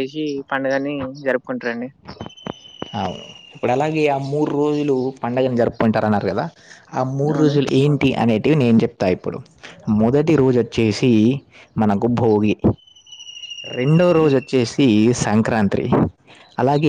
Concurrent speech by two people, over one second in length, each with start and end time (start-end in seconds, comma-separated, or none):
none